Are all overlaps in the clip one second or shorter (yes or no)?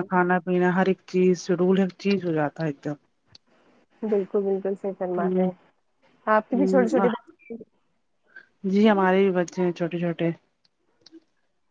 yes